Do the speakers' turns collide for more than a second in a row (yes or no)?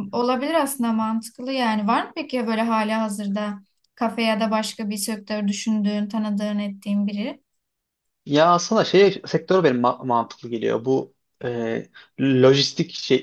no